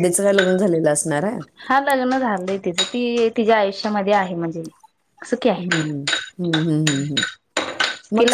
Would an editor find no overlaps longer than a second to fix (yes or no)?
yes